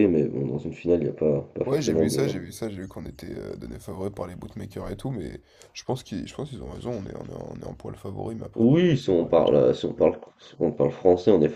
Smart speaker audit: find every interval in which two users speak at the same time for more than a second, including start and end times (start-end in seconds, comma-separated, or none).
8.5-10.1